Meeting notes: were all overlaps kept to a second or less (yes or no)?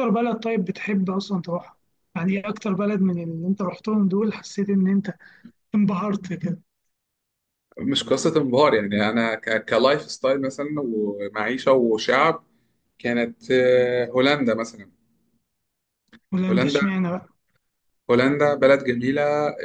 yes